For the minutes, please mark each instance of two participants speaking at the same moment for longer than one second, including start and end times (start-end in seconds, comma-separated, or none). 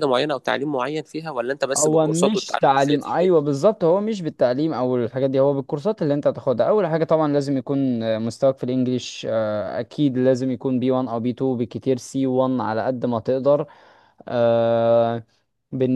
1.8-3.3